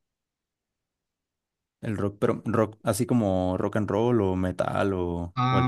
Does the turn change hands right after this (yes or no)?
yes